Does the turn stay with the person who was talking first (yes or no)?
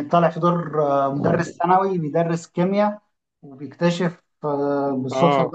yes